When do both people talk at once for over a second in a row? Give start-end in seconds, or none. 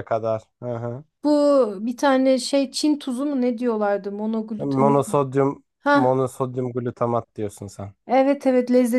none